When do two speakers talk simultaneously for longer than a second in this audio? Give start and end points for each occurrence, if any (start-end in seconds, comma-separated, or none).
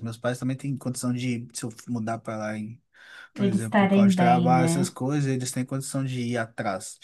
3.3-4.9